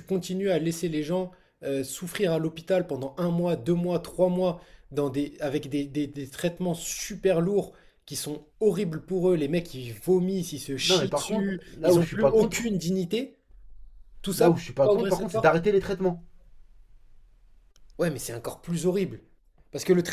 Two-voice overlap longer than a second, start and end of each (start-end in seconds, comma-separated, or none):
10.8-12.7, 14.4-15.6